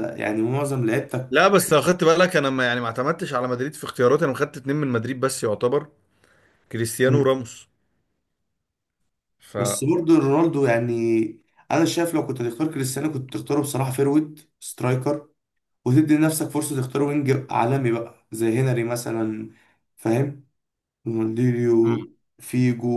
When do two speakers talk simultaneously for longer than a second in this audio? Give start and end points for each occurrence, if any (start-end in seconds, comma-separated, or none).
none